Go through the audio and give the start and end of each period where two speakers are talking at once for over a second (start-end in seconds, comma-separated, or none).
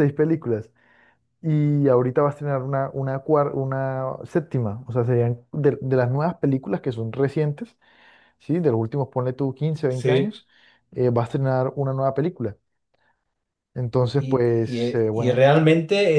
14.0-15.4